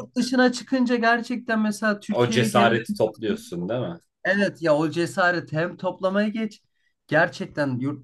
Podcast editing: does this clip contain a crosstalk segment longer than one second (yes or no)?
yes